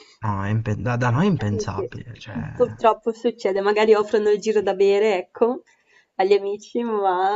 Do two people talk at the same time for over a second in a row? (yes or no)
no